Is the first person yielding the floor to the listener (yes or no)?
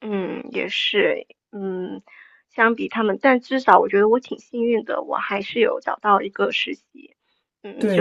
yes